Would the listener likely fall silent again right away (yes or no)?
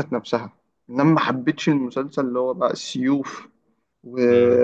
yes